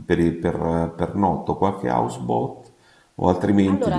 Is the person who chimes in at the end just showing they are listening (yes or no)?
no